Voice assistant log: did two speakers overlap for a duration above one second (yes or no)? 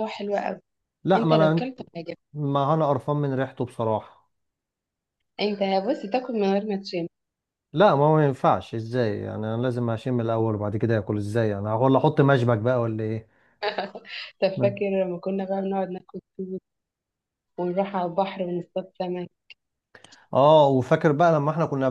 no